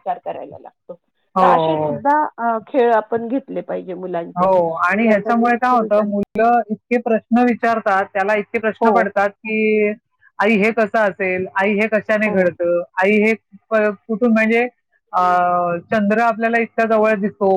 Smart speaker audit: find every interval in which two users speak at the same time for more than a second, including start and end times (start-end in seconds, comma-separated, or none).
4.4-6.1